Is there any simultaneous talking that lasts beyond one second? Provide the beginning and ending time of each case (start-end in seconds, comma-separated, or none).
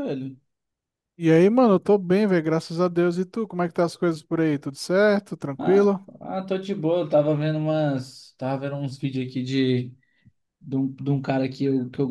none